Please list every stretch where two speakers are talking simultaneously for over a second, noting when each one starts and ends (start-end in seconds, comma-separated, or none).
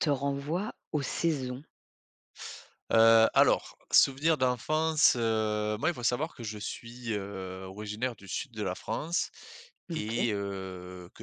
none